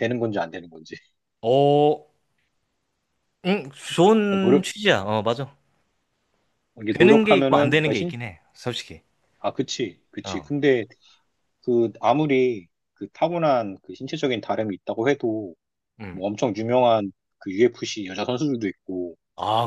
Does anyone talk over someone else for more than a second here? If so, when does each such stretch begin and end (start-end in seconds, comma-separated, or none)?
6.9-8.1